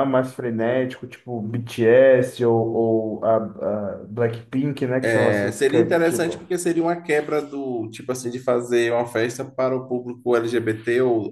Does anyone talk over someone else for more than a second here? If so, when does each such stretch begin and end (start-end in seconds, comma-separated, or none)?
5.0-6.4